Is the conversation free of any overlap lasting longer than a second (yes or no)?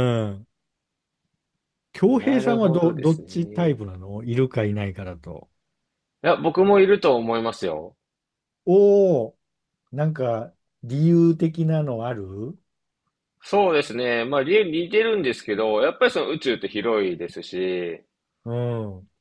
no